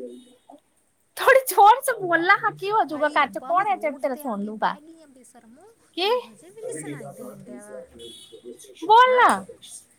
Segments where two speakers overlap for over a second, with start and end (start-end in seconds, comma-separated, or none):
2.9-4.7